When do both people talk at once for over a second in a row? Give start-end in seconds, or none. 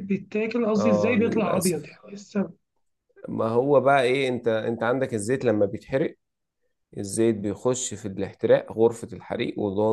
0.8-2.0